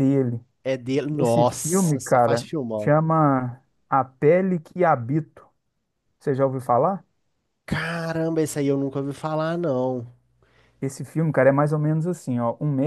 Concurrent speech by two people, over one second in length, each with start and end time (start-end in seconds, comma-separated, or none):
1.2-2.9